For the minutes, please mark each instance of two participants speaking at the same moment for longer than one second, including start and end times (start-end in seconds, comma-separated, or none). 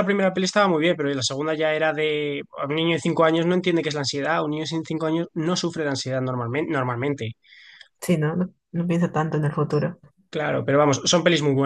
none